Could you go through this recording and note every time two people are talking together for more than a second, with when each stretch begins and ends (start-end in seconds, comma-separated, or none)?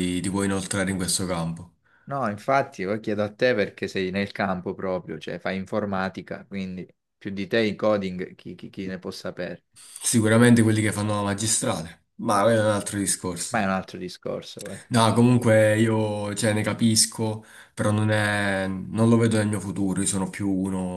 none